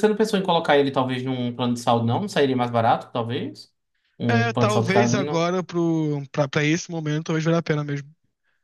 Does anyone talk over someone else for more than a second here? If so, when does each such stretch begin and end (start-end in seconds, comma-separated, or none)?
4.3-5.5